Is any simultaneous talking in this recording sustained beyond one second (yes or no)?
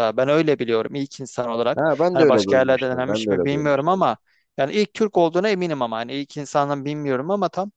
yes